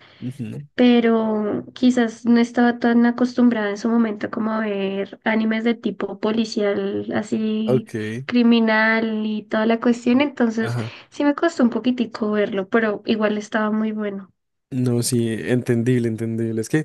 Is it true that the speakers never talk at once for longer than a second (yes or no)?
yes